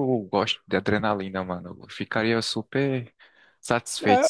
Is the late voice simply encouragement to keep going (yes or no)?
no